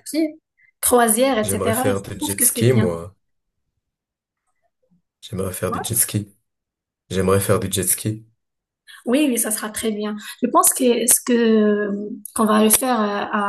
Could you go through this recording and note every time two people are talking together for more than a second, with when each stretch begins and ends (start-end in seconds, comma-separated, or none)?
1.4-2.9